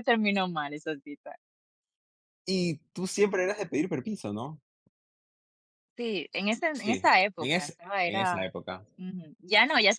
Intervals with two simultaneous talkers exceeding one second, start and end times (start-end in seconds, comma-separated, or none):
6.7-8.5